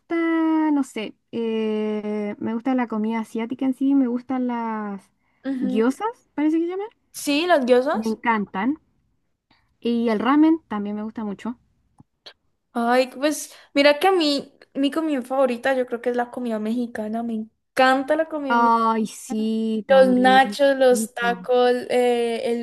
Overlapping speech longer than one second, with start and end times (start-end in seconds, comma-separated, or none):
19.9-21.5